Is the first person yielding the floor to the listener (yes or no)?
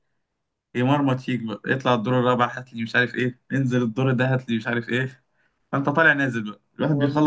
no